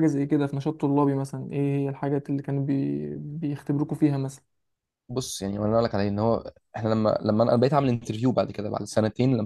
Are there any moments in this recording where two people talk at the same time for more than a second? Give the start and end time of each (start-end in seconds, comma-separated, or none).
none